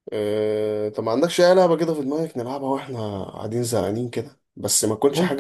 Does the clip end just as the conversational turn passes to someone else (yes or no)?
no